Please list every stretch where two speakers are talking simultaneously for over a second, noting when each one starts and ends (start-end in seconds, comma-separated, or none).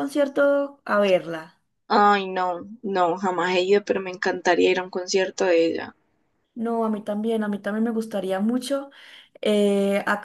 none